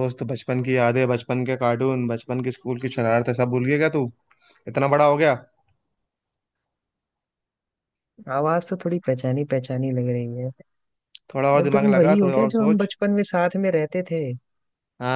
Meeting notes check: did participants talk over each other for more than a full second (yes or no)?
yes